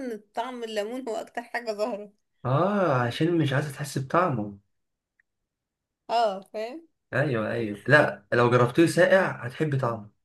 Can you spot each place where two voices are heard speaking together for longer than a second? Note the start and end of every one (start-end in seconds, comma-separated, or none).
none